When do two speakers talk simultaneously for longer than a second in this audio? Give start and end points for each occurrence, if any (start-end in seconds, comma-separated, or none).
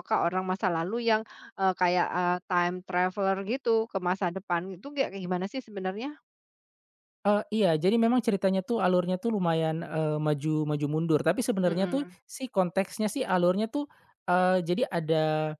none